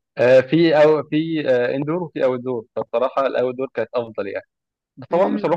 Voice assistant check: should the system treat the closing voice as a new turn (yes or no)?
no